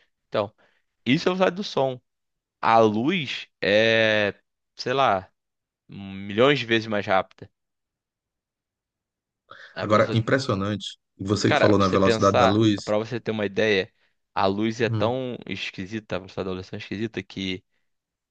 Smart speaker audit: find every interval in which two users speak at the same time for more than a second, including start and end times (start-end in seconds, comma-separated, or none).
11.4-12.9